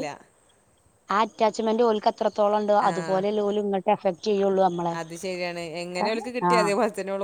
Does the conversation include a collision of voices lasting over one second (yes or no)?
no